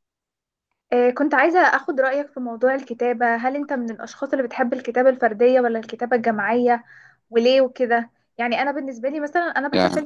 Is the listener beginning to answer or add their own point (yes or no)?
no